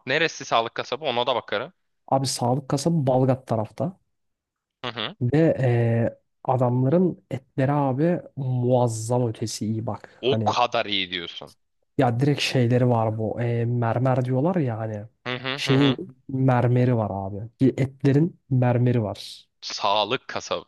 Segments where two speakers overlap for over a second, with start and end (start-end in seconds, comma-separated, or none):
none